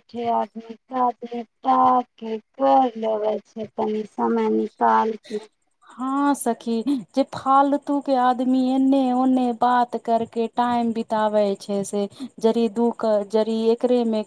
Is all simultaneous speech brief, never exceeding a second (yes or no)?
yes